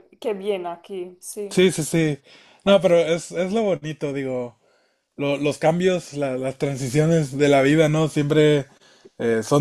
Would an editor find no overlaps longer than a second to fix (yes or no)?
yes